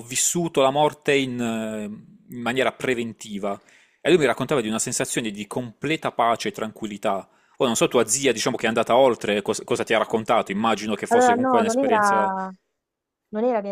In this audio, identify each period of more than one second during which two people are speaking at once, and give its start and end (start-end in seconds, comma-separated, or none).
11.1-12.3